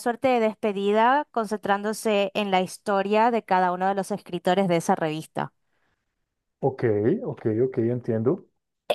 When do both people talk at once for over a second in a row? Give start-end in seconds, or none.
none